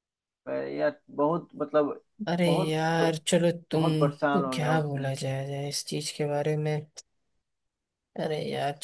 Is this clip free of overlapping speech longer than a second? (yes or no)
no